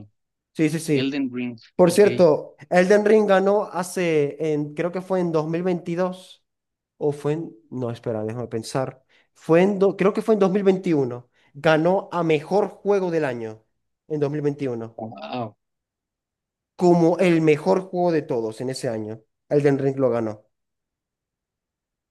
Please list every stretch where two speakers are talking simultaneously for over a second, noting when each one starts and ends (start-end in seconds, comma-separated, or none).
none